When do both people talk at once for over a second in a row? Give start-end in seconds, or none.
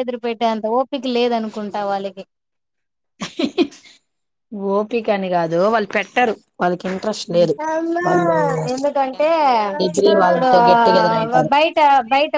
10.0-11.5